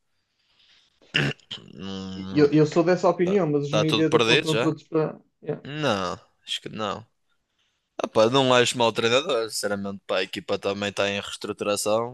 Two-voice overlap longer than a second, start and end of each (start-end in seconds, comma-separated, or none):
3.2-4.7